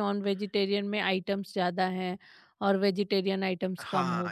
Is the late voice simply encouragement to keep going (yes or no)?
no